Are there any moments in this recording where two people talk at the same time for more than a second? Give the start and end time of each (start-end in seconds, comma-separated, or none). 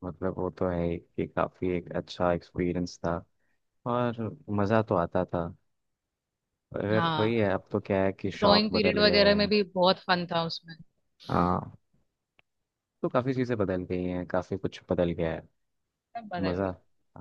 8.2-9.5